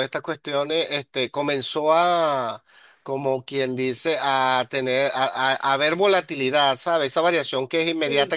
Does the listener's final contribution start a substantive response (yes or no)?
no